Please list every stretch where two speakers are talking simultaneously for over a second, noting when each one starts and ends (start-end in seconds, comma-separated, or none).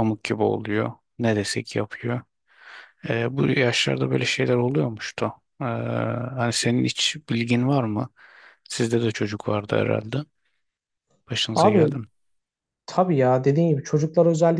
none